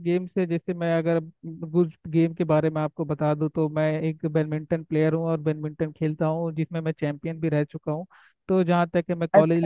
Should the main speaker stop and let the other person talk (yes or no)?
yes